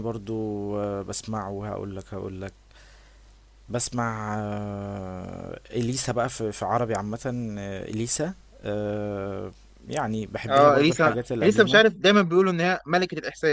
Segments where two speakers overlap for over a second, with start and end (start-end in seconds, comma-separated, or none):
10.5-11.8